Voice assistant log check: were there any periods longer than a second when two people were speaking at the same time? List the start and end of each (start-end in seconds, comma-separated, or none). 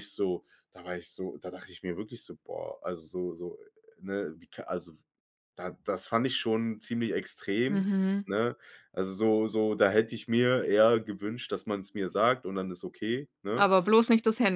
none